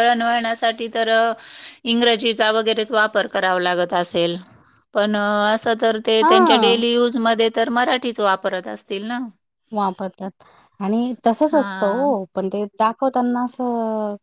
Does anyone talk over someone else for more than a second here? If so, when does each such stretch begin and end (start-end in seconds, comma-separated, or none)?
none